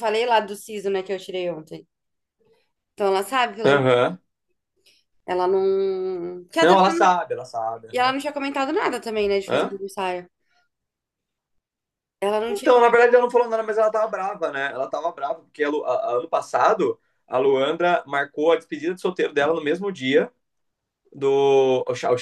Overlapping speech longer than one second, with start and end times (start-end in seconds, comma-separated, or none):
none